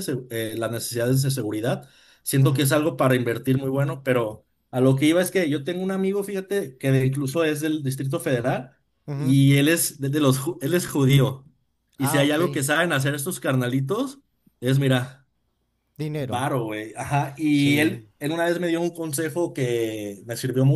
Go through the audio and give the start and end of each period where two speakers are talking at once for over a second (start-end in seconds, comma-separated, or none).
none